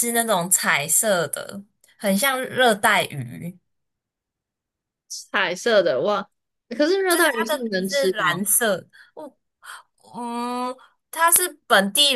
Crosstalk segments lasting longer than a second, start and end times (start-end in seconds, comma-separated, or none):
7.1-8.4